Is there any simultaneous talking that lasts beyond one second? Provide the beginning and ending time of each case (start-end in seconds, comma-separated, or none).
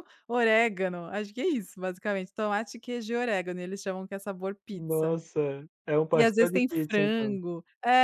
6.1-7.4